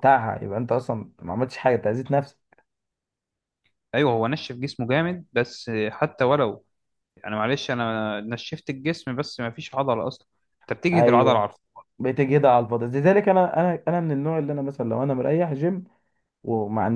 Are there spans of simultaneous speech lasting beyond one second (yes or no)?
no